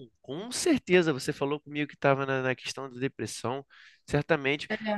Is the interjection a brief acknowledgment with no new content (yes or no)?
yes